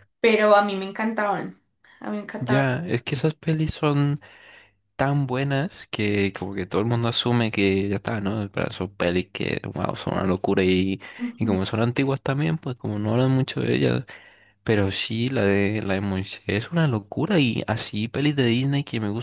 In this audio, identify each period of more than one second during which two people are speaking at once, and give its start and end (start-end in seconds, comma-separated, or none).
none